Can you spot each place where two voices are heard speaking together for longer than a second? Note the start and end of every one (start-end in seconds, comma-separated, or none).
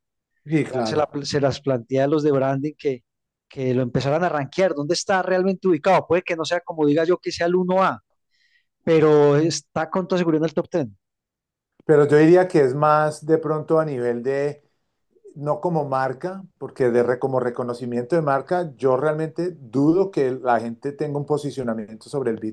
none